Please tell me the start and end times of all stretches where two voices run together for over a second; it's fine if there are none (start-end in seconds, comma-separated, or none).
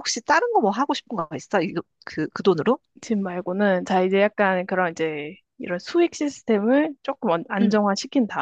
none